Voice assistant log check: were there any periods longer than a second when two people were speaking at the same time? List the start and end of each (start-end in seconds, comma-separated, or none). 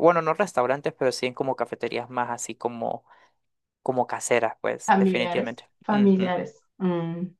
4.9-6.3